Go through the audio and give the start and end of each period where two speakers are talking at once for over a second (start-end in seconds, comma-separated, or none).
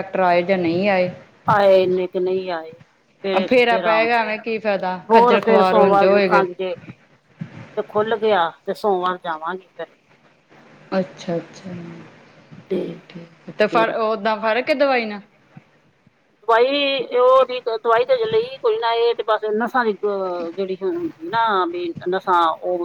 5.1-6.5